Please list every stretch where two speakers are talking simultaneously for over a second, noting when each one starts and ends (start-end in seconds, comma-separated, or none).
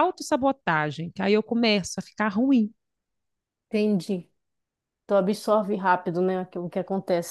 none